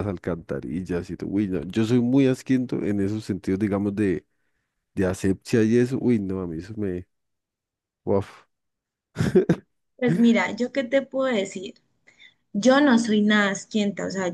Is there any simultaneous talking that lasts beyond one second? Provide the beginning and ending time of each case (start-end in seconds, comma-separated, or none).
none